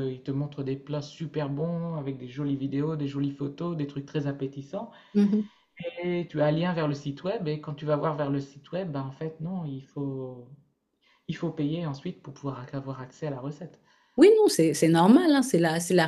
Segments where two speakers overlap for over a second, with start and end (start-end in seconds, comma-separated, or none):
none